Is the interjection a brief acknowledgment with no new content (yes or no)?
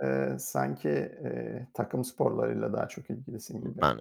no